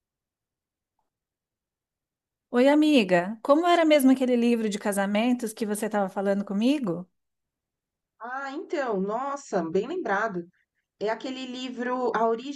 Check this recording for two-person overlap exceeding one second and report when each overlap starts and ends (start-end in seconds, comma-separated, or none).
none